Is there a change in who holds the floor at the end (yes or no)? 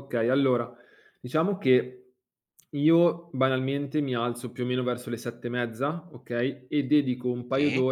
no